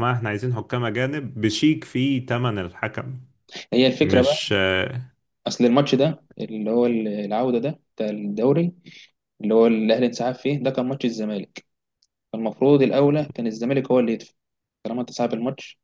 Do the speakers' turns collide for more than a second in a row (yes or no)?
no